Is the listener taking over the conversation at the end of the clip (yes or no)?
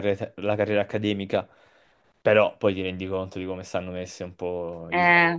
no